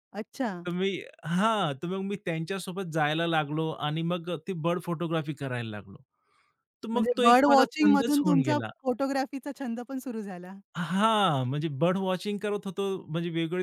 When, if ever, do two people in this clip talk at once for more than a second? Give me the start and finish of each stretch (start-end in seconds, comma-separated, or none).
6.9-8.7